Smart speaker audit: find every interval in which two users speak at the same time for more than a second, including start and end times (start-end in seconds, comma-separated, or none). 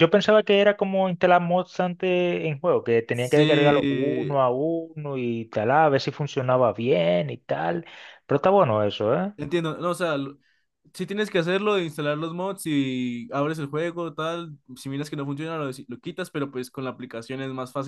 3.1-4.4